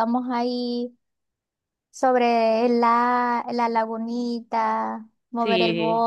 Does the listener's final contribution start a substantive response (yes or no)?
no